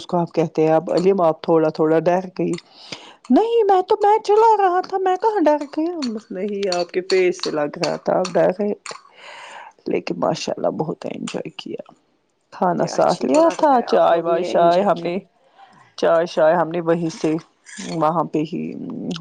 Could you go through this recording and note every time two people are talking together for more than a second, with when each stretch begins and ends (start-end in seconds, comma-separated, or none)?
12.8-15.1